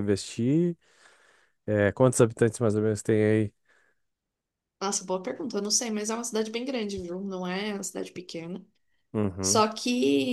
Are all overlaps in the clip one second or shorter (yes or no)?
yes